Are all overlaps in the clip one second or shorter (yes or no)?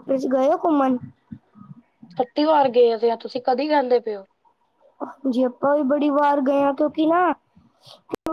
yes